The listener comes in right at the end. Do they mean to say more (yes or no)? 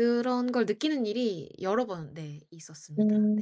yes